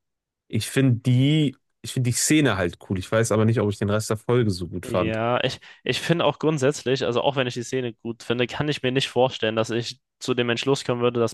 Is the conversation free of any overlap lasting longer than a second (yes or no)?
yes